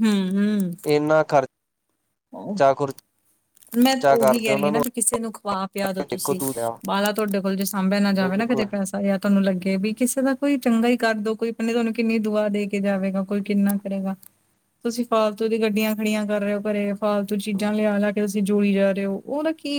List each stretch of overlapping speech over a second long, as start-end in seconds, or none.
none